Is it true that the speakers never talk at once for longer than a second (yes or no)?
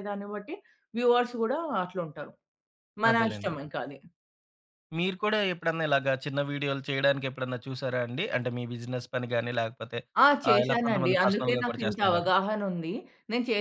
no